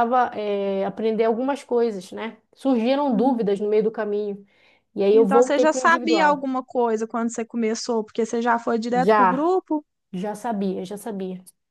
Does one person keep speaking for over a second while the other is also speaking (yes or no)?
yes